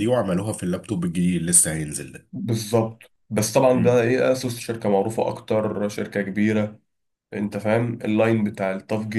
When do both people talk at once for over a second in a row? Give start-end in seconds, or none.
none